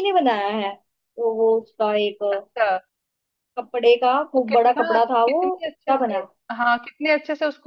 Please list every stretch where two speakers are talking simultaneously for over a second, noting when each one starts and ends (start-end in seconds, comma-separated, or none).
4.4-6.2